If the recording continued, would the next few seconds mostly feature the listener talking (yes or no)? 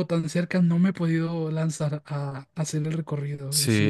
yes